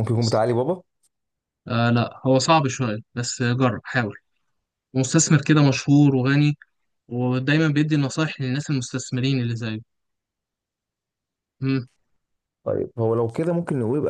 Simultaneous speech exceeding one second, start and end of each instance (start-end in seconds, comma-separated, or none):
none